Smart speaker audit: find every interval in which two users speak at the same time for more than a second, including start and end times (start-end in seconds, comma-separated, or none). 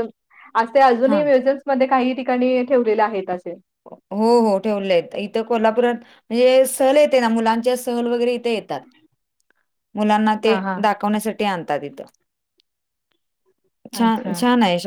none